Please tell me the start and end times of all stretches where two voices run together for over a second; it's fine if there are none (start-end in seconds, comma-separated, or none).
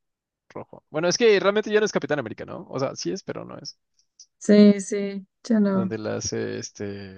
none